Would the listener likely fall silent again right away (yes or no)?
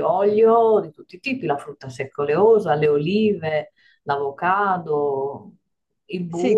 no